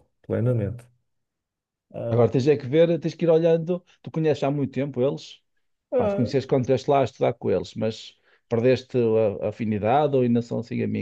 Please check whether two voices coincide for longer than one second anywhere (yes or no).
no